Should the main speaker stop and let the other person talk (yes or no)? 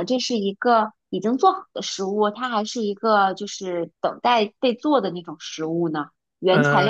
yes